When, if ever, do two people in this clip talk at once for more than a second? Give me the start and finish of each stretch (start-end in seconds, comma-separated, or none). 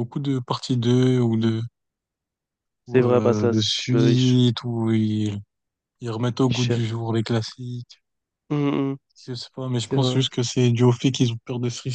2.9-4.4